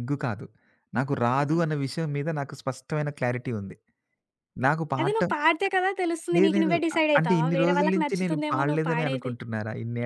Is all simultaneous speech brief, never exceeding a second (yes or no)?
no